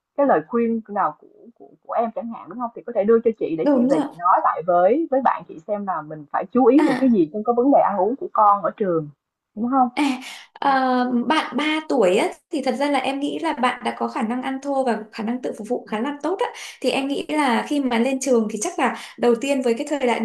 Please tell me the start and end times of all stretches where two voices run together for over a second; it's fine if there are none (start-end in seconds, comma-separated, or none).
none